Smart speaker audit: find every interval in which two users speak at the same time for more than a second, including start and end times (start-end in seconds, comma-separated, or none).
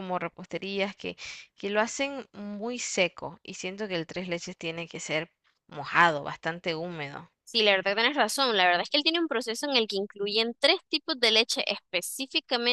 none